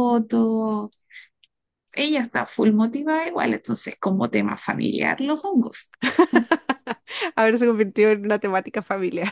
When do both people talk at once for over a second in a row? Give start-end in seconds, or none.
none